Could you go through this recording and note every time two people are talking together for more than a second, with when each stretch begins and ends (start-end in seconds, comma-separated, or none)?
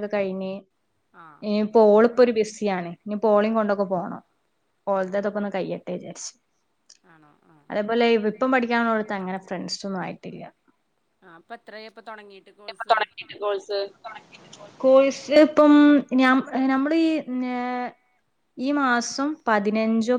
none